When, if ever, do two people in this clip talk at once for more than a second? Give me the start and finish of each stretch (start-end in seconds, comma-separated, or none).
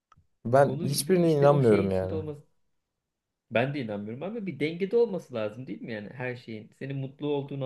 0.7-2.2